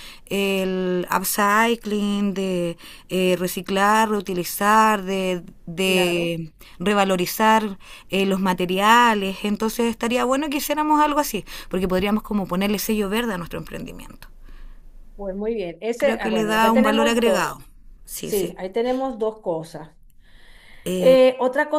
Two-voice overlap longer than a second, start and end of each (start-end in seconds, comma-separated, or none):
16.0-17.6